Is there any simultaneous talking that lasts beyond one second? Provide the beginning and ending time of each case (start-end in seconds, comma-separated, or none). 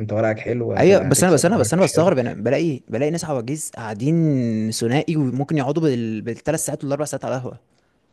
0.8-2.1